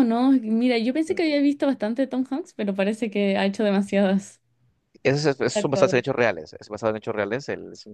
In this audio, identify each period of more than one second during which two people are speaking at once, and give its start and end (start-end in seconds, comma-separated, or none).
none